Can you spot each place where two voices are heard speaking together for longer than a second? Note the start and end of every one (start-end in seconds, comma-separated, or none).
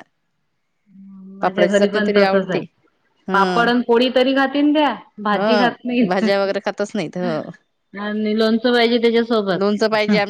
1.4-2.6